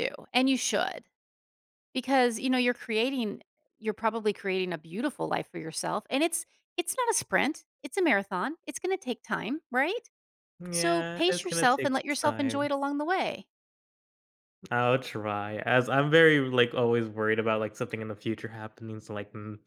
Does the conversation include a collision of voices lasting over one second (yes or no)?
yes